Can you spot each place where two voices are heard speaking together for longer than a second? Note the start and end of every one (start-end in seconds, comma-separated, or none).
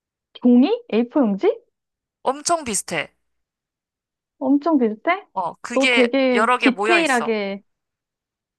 5.7-7.4